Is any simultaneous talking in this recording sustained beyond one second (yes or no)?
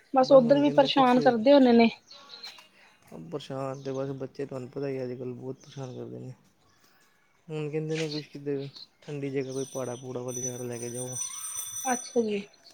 no